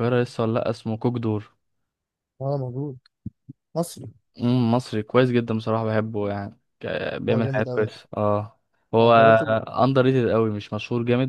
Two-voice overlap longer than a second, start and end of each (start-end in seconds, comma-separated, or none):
none